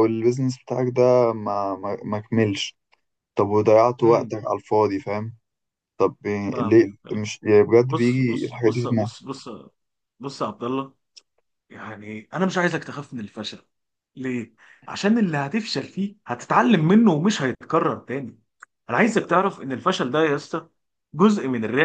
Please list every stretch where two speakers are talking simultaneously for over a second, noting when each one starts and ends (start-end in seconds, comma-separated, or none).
7.9-9.1